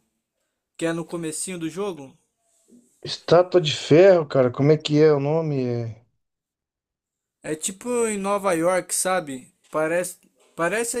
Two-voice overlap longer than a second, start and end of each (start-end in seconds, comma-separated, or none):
none